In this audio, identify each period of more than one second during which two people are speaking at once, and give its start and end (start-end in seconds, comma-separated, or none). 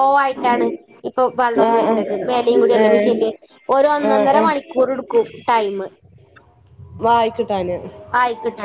1.7-3.3